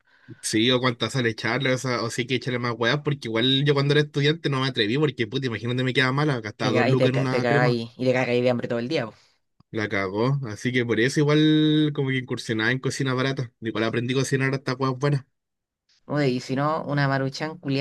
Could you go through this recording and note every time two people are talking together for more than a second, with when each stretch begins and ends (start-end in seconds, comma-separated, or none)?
6.6-7.8